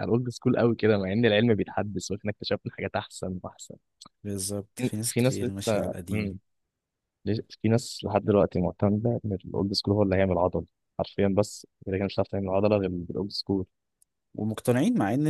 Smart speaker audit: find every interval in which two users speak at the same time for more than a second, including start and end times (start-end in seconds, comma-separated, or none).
4.8-6.4